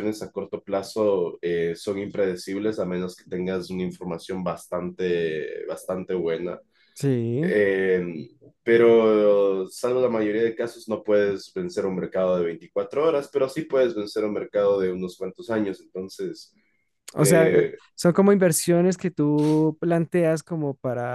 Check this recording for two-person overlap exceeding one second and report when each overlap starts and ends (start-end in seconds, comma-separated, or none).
none